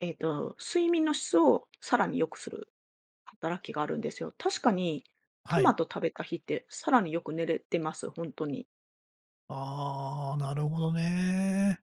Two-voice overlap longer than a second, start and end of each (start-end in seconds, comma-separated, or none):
none